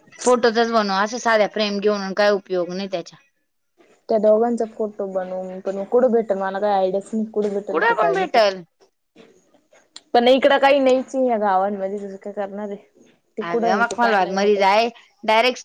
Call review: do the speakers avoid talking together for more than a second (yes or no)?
no